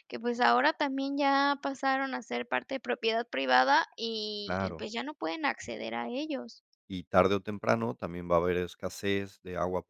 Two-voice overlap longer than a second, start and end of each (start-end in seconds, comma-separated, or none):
none